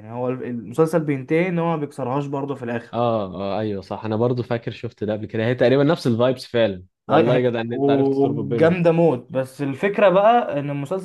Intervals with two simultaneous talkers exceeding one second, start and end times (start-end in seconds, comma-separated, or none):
7.1-8.8